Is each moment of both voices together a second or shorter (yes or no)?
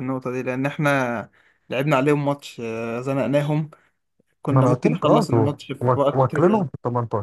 no